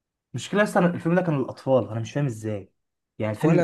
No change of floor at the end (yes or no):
yes